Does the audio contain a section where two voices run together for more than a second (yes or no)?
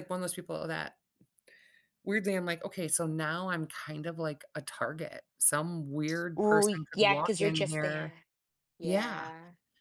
yes